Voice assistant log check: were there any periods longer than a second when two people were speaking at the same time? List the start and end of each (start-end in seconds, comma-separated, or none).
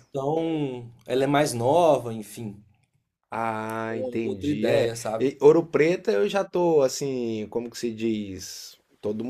3.9-5.3